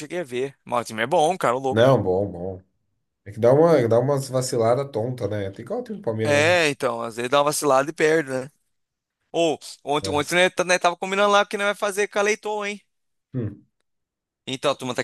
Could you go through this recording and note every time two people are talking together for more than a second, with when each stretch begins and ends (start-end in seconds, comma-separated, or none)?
none